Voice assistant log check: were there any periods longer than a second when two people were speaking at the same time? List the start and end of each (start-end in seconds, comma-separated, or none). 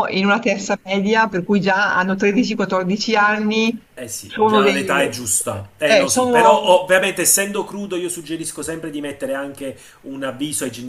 4.2-6.7